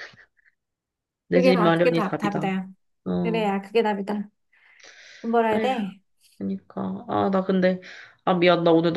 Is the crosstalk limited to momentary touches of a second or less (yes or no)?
no